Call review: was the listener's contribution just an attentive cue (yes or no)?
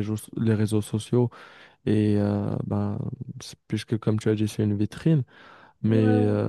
yes